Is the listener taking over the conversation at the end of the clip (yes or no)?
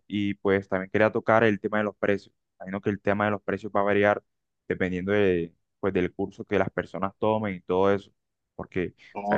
no